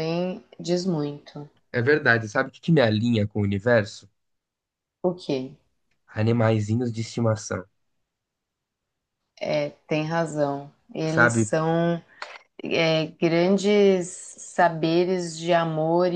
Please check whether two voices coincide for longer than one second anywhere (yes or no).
no